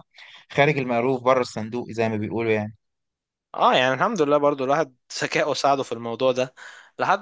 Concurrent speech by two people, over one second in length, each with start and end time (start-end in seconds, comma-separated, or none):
none